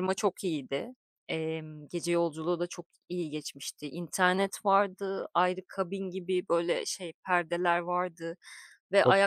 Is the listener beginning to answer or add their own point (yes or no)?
no